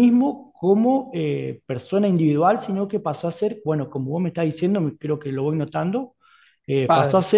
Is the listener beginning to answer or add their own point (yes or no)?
no